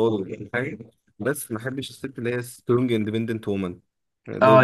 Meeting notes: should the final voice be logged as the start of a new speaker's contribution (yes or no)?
yes